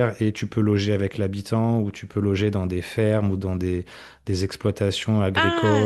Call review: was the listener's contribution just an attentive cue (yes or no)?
no